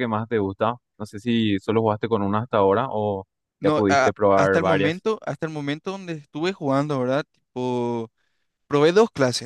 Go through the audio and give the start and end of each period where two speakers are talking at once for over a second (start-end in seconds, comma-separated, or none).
3.6-5.0